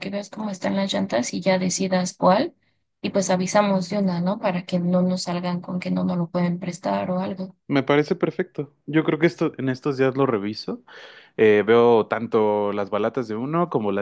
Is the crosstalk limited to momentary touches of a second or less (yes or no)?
yes